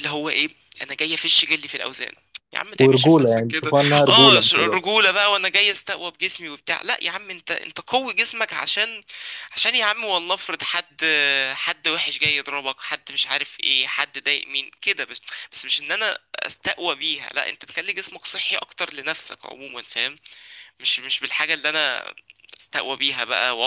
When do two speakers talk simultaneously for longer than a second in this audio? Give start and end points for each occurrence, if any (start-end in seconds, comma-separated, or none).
2.8-4.8